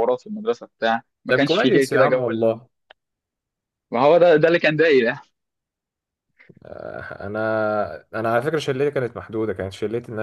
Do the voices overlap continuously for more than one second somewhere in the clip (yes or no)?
yes